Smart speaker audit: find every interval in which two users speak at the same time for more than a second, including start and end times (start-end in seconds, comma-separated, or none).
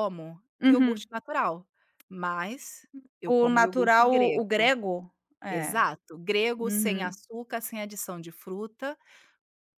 3.2-4.7